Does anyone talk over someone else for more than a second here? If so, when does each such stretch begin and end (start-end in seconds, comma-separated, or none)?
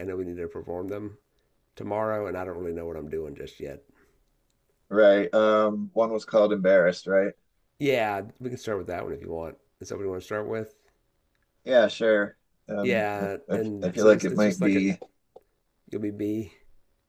12.8-14.8